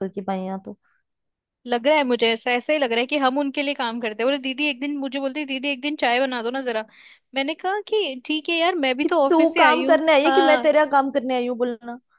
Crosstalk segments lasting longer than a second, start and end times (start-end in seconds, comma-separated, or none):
9.0-10.7